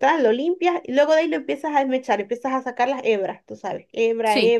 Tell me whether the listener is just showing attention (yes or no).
yes